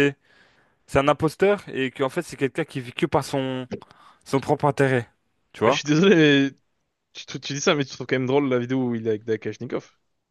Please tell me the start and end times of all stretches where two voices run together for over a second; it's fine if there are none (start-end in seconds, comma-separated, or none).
none